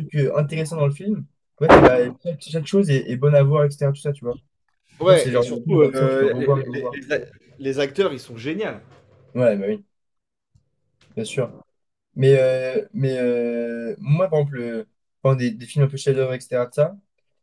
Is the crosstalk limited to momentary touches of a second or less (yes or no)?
no